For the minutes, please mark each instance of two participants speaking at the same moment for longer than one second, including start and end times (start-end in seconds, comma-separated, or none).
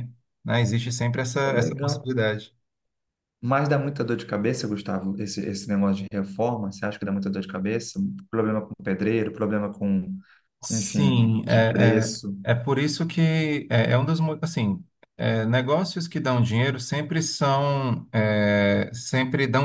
10.7-12.4